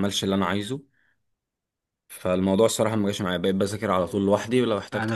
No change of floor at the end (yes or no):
no